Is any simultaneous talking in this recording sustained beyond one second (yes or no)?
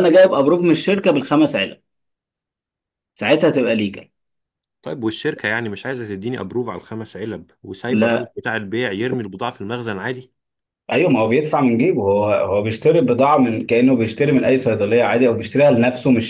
no